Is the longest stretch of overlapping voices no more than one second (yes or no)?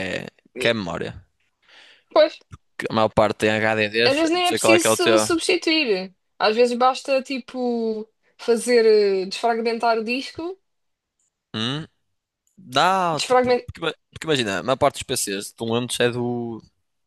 no